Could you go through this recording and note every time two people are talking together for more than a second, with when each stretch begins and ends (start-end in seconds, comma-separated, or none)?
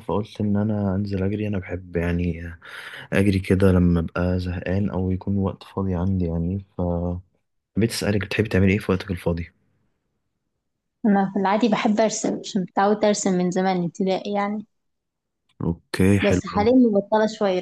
none